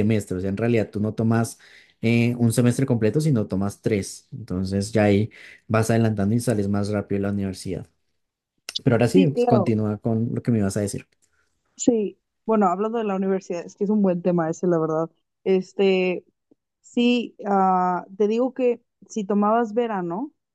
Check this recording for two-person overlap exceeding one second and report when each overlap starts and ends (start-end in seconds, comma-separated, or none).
none